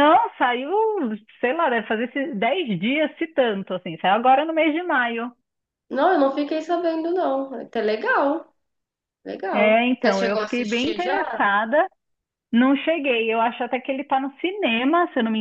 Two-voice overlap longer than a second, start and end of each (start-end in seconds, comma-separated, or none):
9.5-11.5